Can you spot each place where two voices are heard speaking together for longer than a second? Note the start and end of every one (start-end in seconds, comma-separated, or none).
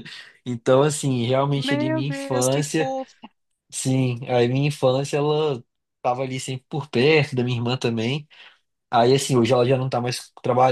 1.6-3.0